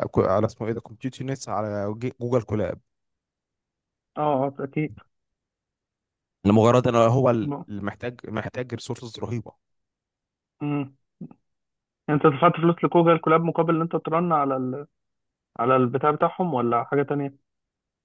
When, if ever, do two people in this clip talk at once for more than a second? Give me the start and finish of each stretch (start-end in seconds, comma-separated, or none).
none